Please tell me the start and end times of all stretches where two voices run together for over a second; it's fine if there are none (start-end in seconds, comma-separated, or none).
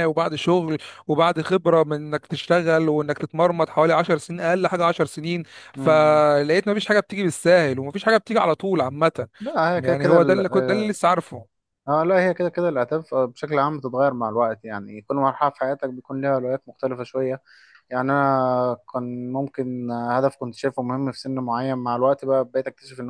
9.7-11.0